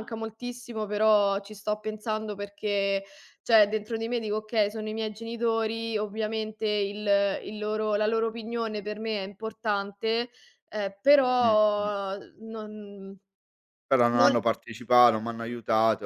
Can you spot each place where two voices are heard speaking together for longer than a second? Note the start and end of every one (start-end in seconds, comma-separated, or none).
none